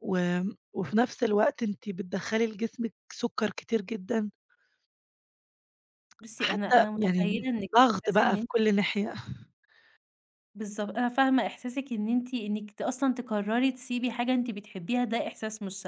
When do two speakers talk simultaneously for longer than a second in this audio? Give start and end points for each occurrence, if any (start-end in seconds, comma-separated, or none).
6.4-8.5